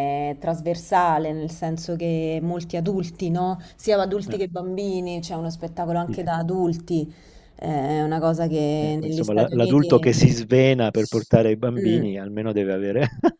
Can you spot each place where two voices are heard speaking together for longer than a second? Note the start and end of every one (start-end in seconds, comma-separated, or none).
8.8-10.3